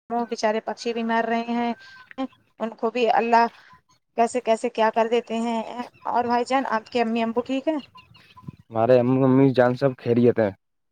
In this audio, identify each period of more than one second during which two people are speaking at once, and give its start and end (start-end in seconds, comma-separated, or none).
none